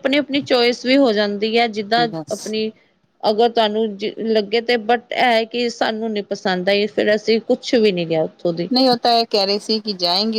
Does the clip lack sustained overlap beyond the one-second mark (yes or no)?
yes